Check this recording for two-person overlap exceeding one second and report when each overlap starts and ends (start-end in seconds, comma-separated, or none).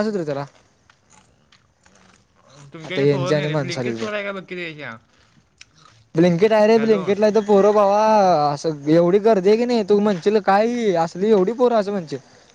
2.9-4.1